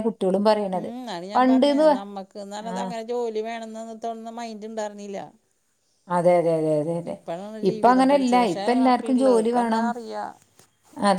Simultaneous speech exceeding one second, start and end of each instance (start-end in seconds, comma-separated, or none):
7.7-9.9